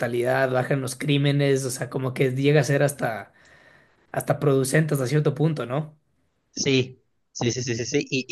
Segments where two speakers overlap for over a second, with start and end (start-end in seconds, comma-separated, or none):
none